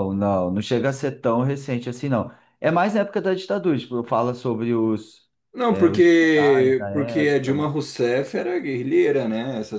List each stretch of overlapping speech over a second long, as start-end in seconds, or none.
5.7-7.7